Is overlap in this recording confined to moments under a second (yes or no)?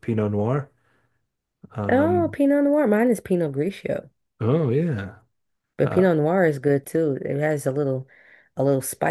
yes